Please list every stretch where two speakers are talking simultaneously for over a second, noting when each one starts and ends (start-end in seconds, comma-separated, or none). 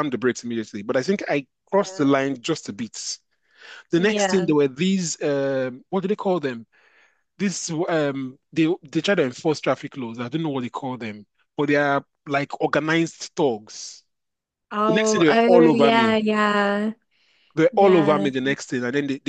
14.9-16.2